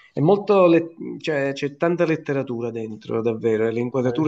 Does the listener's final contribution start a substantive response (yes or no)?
no